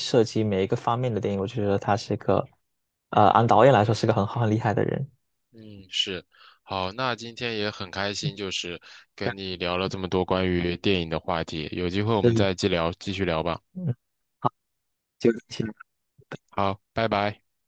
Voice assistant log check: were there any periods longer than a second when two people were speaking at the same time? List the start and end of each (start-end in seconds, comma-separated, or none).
none